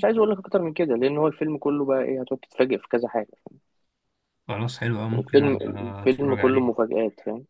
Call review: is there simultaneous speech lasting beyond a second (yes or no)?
yes